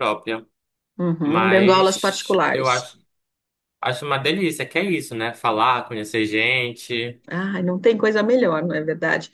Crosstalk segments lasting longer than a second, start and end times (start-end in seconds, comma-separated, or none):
1.2-2.9